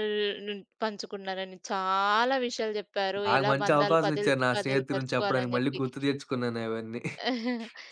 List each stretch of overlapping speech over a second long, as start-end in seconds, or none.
3.2-5.8